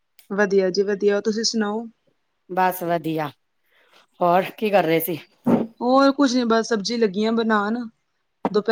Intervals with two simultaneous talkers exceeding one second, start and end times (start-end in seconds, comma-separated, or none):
none